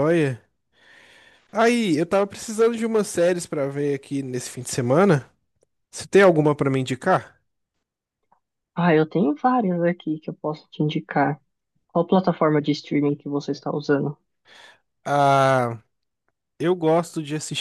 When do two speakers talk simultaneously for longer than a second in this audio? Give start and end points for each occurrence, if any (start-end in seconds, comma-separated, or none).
none